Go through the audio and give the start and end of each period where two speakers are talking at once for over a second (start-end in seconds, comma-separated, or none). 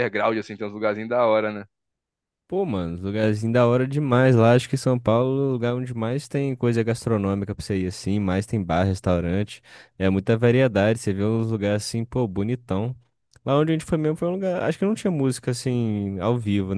none